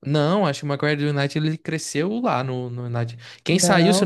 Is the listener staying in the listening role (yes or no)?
yes